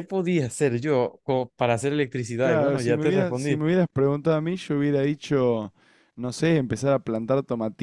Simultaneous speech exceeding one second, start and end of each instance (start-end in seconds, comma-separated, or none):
2.4-3.6